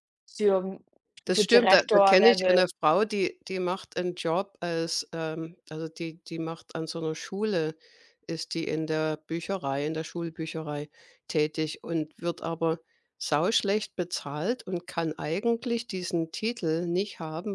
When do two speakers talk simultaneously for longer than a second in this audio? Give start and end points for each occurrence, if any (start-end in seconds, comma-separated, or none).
1.3-2.6